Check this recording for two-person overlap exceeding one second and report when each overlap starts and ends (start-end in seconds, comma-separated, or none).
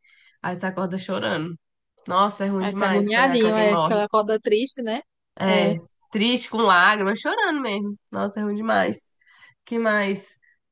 2.6-4.0